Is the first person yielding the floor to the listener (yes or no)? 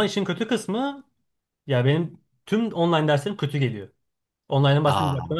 no